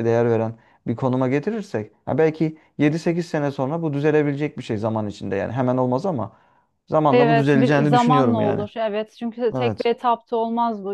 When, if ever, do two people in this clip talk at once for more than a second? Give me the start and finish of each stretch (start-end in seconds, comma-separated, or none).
7.1-8.7